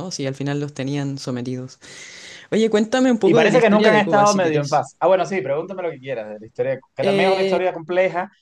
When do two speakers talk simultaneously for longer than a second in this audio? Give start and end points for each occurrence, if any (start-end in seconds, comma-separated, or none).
3.2-4.8